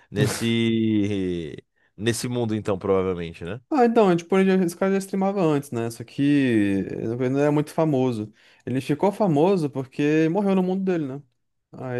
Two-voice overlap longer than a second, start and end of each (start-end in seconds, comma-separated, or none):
none